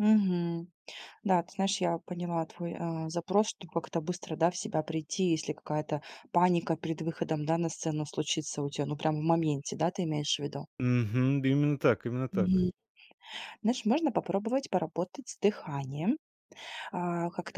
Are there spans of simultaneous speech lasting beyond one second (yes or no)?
no